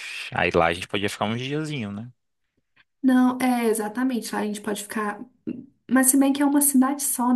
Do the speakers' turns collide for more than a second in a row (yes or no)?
no